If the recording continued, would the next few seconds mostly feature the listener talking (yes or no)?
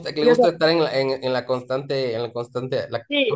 yes